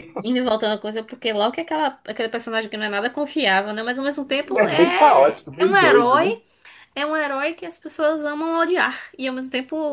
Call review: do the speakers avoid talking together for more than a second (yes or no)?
no